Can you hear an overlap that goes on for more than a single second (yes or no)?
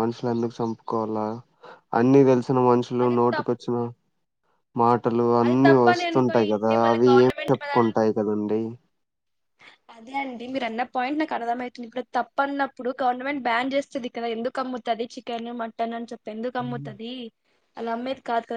yes